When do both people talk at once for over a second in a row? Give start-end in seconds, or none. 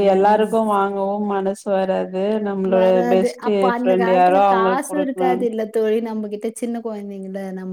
2.7-5.5